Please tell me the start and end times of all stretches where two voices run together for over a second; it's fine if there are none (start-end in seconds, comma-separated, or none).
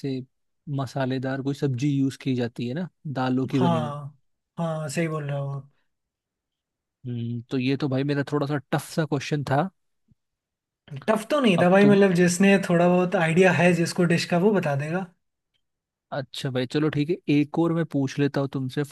none